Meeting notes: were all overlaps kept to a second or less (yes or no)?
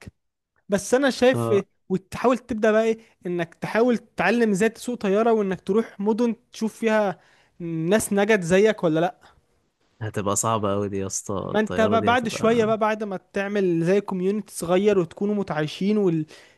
no